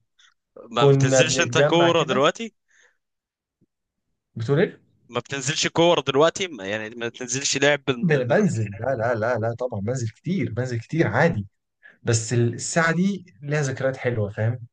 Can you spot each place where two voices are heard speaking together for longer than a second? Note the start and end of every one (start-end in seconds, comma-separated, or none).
0.8-2.2